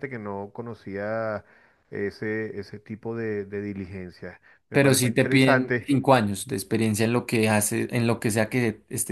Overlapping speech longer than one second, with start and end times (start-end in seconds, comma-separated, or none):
4.7-6.0